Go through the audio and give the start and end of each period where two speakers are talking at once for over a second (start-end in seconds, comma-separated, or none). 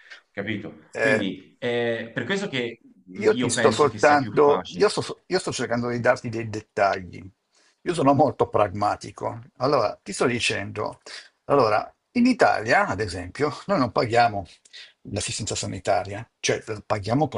3.1-4.9